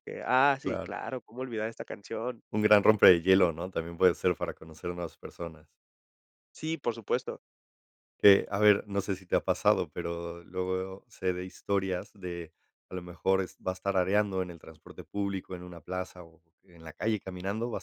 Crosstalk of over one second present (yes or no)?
no